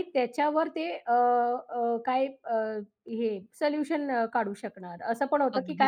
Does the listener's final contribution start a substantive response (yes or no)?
no